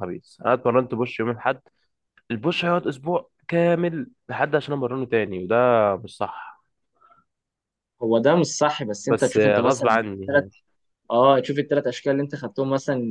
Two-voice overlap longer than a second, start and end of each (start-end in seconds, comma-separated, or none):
9.1-10.4